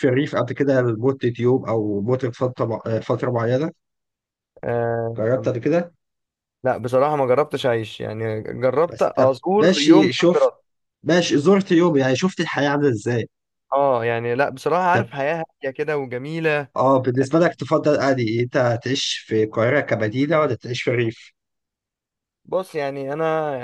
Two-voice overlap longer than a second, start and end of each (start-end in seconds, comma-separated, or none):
8.9-10.5